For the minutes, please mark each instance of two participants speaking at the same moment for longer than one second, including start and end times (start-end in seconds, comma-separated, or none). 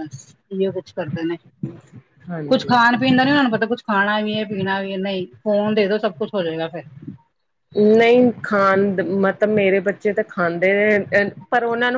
none